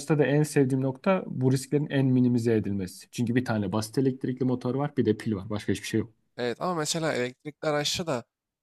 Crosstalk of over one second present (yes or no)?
no